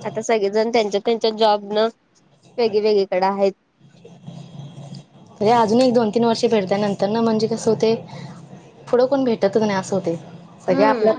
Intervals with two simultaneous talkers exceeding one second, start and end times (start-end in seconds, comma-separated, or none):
none